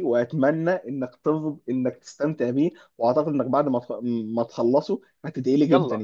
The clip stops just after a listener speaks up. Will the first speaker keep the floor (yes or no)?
no